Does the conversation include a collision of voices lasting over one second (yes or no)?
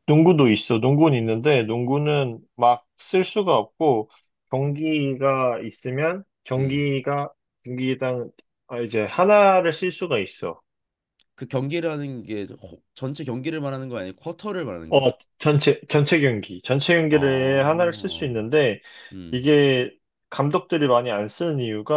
yes